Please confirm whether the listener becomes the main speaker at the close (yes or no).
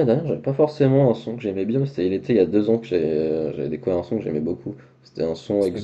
no